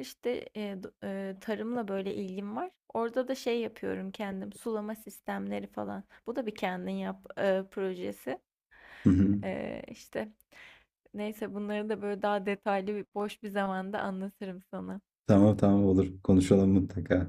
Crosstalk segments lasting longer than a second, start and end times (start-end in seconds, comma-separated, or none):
none